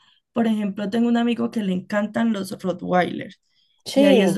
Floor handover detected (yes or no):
no